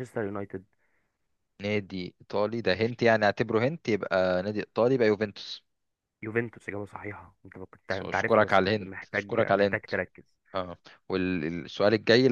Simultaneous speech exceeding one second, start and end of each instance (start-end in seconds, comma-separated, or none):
7.9-9.9